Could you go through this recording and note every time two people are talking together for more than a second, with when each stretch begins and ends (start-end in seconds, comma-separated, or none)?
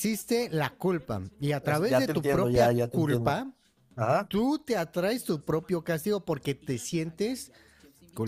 1.6-3.5